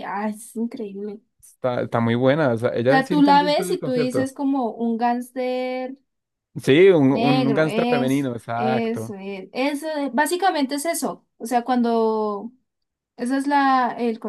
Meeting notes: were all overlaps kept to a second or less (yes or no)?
no